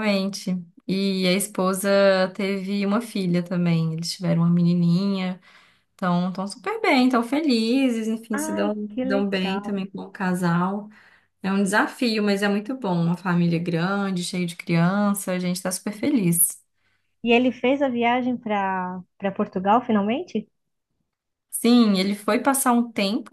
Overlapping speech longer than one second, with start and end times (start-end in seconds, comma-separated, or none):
8.3-9.8